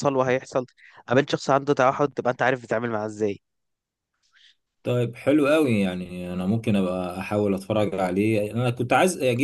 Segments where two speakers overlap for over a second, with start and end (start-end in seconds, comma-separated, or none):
none